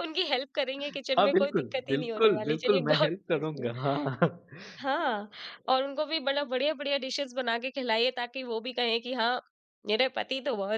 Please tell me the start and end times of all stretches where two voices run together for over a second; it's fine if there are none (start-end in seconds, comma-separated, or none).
1.2-3.5